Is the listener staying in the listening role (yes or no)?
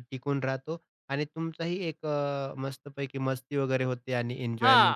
no